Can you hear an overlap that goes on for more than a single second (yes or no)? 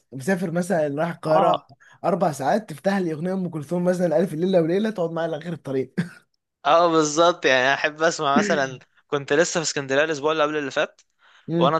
no